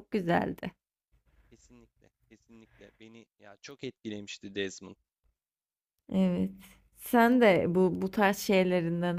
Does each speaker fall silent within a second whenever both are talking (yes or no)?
yes